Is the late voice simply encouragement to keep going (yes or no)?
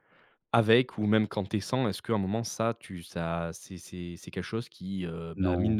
yes